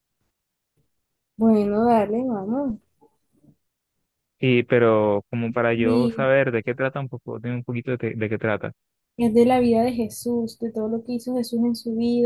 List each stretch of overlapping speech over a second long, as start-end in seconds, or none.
none